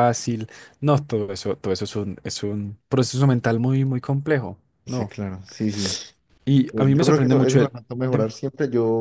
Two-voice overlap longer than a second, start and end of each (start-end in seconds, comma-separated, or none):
6.7-8.3